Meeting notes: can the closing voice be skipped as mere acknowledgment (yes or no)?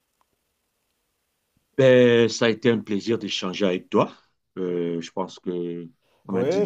no